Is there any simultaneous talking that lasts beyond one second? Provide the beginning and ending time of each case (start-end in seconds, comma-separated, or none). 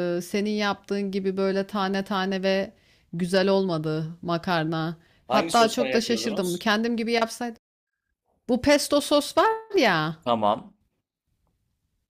5.3-6.6